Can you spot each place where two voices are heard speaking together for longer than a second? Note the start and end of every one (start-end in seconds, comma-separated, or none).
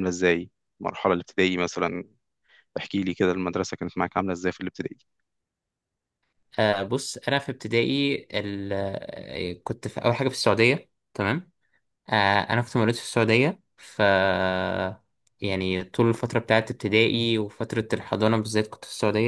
none